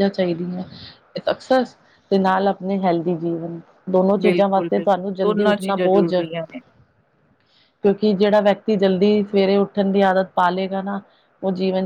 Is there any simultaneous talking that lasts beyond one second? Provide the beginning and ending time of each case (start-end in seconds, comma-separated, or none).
4.2-6.2